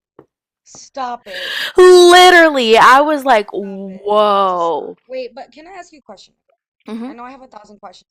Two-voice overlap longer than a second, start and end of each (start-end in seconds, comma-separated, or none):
3.6-5.0